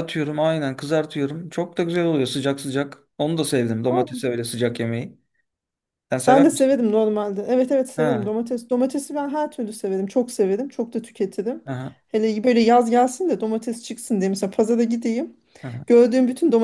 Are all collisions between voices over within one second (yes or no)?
yes